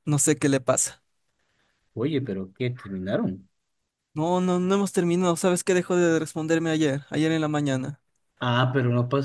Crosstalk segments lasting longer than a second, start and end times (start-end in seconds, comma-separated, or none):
none